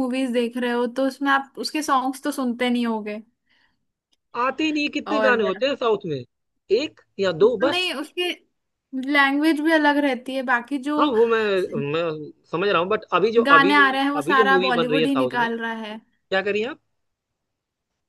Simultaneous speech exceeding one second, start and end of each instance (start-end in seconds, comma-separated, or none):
13.5-15.5